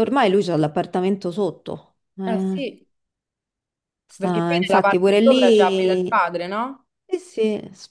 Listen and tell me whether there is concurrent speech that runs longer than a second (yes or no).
yes